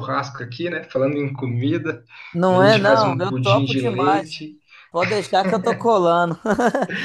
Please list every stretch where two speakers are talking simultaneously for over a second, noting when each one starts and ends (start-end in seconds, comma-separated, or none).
2.5-4.4